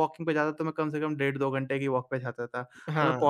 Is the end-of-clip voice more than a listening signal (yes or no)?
no